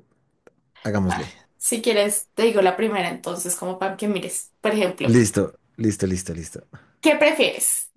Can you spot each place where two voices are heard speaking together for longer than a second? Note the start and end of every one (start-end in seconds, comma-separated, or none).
none